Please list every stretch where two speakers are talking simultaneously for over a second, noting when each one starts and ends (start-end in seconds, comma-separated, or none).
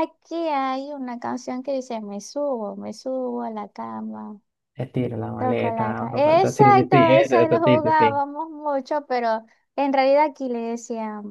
5.4-8.2